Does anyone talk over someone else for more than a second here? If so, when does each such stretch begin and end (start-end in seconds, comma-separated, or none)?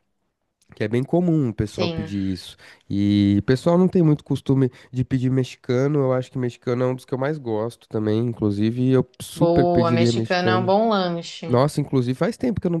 9.3-10.7